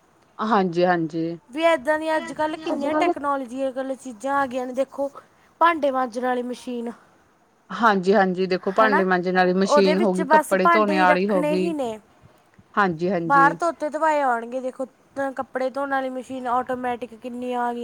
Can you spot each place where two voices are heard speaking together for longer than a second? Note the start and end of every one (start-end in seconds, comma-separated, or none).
9.7-11.7